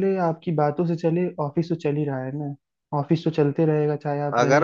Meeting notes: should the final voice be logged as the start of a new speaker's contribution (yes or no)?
yes